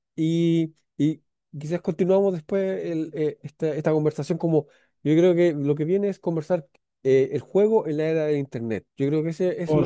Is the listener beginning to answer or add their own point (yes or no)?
yes